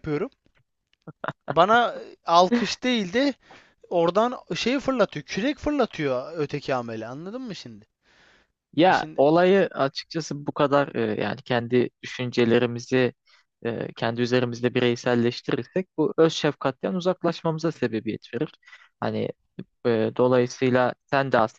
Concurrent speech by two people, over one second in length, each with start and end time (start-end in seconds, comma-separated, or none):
none